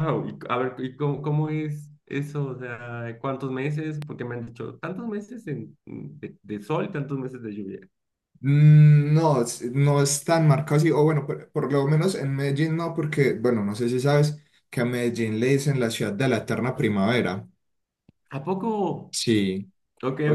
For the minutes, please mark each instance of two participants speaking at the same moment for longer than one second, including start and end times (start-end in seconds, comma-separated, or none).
none